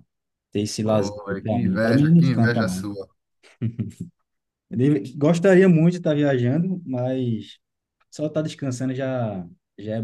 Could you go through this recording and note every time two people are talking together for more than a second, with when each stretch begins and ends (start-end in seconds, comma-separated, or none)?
0.8-2.9